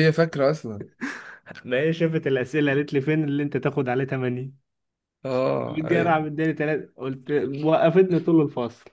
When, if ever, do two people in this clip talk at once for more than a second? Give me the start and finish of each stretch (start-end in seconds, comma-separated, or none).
none